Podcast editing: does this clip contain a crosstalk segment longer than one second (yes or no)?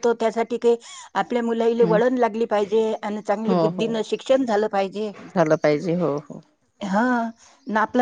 no